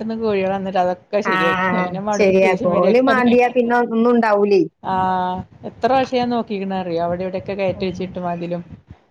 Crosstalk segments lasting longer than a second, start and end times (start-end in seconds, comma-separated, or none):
1.3-3.2